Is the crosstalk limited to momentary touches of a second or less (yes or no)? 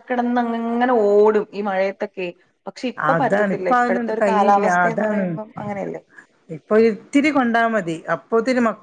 no